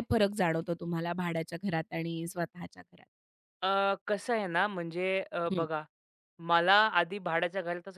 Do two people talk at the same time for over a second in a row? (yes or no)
no